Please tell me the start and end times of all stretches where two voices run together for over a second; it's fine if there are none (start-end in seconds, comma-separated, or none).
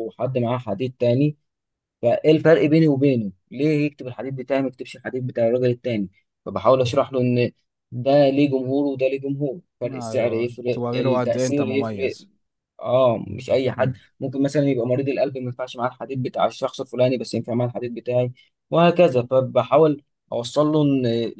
9.8-12.2